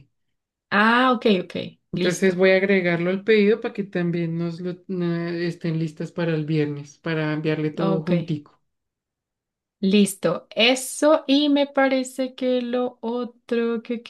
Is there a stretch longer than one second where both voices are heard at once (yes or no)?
no